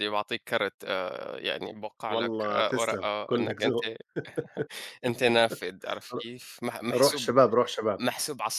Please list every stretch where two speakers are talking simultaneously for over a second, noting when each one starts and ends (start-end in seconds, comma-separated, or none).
2.1-3.8